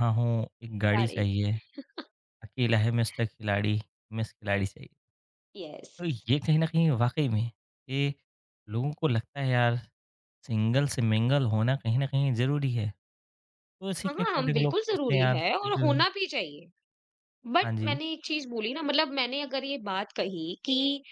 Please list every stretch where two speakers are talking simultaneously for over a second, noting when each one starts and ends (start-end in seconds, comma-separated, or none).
14.1-16.0